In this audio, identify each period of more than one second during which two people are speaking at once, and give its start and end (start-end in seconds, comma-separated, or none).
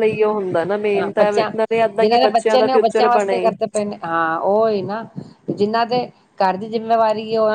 1.0-3.4